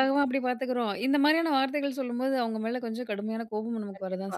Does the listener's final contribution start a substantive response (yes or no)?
yes